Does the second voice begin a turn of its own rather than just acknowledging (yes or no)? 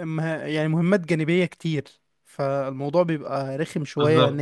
no